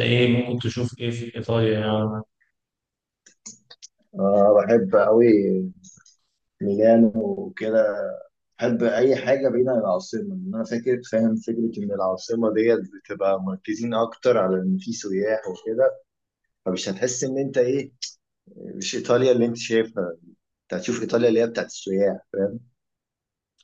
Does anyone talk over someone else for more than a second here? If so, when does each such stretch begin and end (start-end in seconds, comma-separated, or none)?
none